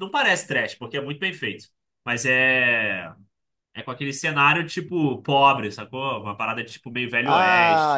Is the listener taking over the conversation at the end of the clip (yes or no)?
yes